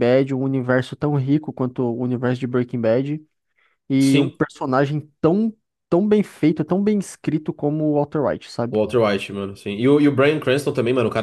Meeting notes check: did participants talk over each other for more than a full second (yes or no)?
no